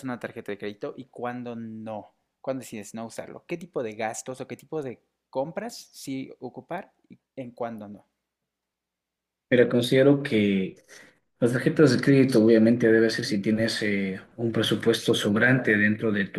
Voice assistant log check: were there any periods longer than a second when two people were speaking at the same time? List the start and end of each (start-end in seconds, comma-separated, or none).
none